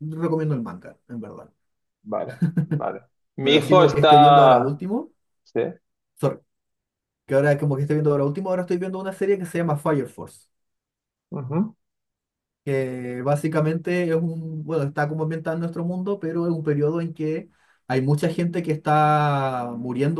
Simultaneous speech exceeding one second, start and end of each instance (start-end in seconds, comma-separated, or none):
3.4-4.8